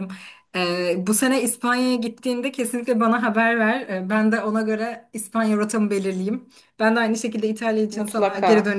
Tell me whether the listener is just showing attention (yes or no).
yes